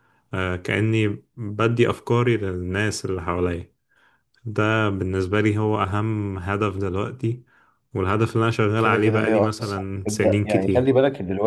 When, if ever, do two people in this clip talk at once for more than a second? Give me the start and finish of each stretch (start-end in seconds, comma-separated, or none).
8.7-10.9